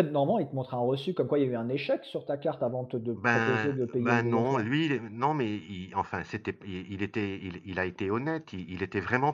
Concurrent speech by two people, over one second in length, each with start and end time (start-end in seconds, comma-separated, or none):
3.1-4.6